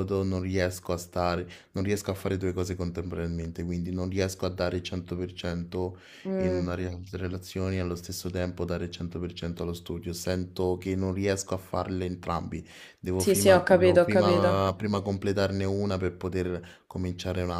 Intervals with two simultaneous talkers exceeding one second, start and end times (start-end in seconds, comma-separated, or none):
13.2-14.7